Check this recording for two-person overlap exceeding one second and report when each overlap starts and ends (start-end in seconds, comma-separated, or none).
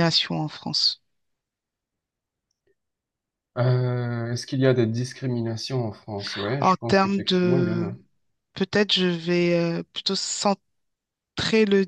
6.6-7.9